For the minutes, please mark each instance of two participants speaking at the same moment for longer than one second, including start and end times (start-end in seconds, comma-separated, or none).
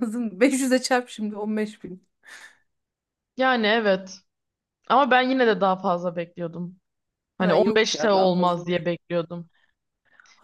7.4-8.9